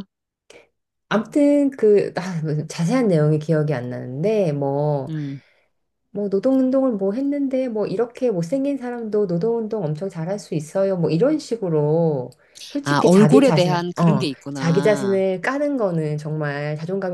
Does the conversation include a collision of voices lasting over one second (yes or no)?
yes